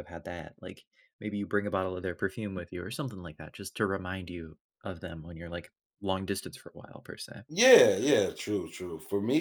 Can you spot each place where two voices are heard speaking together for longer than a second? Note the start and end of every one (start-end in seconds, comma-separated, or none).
none